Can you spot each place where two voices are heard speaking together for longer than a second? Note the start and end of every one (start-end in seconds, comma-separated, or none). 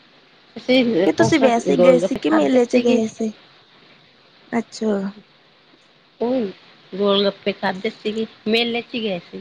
1.1-3.0